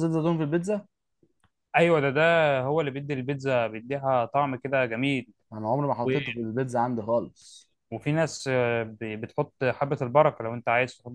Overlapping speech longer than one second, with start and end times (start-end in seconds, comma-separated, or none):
none